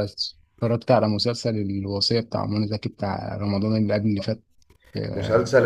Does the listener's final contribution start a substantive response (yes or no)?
yes